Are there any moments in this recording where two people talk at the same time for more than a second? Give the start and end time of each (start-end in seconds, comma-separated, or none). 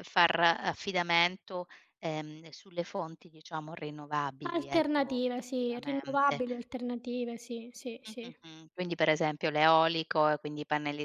4.5-6.4